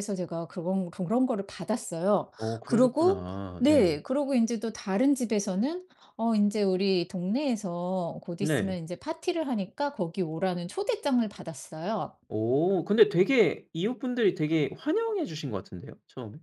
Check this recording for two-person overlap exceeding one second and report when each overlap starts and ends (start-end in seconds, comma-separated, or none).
2.4-4.0